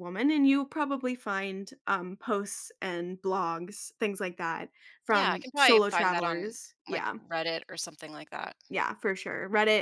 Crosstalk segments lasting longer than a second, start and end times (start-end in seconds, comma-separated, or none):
5.1-7.2